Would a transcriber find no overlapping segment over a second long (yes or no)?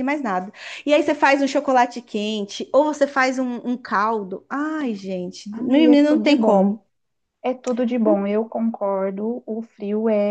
no